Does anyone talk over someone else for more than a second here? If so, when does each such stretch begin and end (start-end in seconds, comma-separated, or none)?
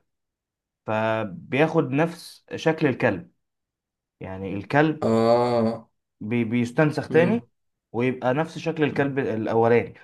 none